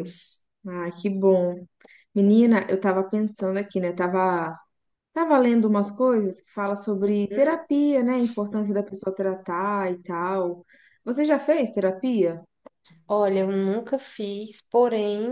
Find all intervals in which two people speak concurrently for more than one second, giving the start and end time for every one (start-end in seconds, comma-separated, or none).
none